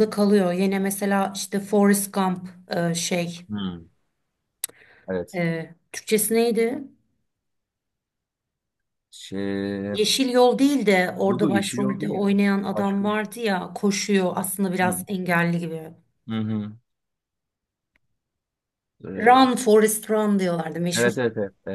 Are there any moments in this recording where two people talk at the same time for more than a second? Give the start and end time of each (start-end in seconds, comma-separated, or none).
11.3-13.2